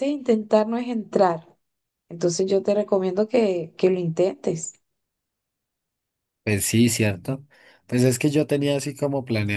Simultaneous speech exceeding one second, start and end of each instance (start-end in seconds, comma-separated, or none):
none